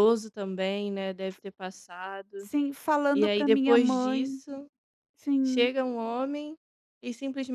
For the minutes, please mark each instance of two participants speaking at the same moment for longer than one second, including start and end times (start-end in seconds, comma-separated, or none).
3.1-4.4